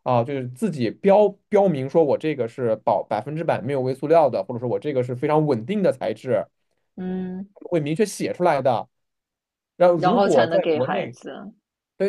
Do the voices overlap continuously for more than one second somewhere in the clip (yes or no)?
yes